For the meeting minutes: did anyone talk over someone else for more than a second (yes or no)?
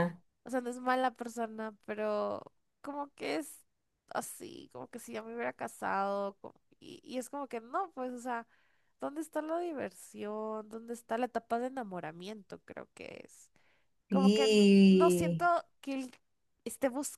yes